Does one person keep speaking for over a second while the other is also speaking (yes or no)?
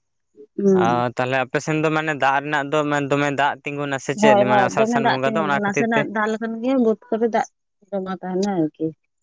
yes